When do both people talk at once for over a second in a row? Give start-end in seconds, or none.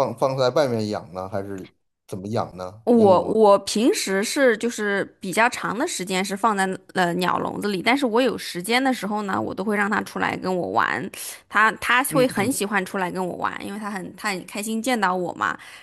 none